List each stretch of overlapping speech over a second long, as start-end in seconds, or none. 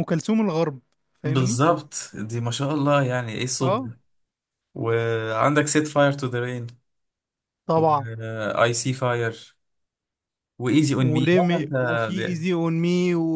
10.9-12.4